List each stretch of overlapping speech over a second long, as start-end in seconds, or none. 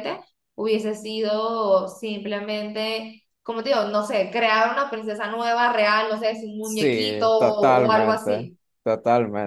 6.6-8.6